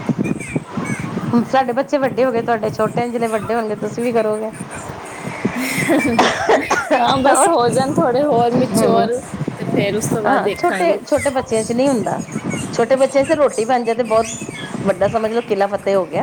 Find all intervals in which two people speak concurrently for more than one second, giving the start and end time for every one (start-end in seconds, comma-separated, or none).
none